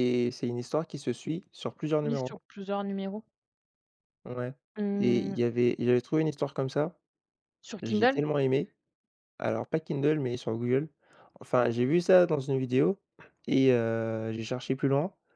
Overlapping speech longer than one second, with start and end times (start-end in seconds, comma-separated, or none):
none